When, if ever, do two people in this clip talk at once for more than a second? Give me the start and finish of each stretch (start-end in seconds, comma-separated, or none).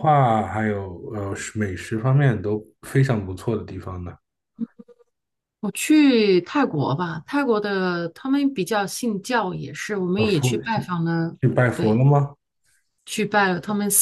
none